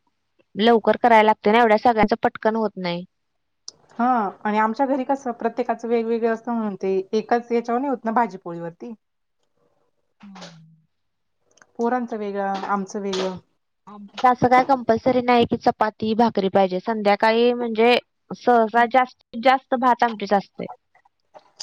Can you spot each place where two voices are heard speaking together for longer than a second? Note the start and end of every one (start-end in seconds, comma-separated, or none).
none